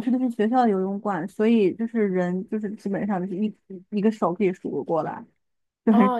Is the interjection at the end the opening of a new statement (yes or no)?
yes